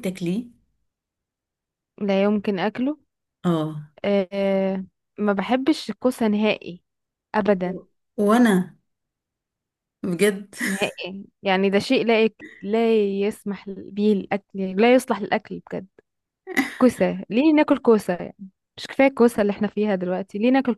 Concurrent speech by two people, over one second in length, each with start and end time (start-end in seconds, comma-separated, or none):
none